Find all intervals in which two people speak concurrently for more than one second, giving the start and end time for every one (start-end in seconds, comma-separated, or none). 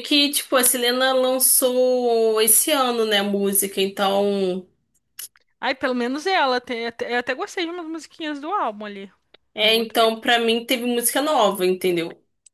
none